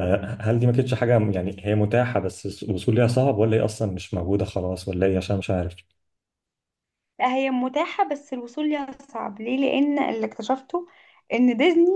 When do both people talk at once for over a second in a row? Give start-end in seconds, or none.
none